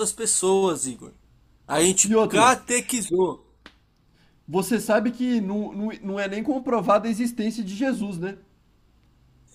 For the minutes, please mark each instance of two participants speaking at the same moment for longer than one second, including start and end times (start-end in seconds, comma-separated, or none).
none